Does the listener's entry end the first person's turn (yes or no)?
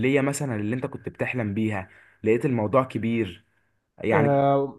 yes